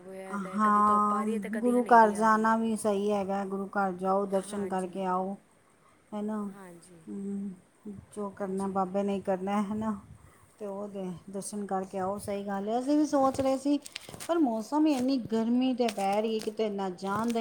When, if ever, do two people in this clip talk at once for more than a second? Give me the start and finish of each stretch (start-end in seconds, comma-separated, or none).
0.6-2.5